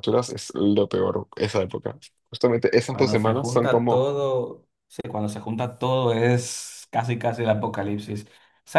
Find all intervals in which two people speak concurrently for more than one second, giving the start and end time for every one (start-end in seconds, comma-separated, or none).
2.9-4.1